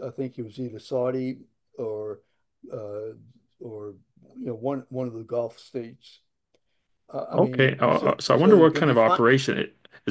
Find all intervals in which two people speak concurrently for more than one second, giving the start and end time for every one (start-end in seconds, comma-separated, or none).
7.3-9.2